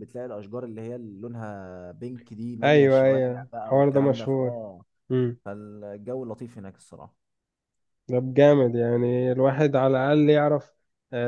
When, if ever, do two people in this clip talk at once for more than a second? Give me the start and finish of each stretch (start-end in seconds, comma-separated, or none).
2.6-4.5